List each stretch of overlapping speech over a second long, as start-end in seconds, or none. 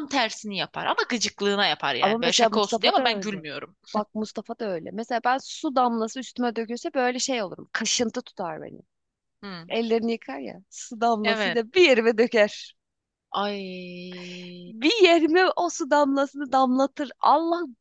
2.0-3.5